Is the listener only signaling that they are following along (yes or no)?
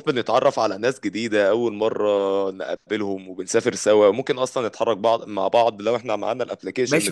no